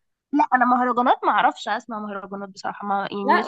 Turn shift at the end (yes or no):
yes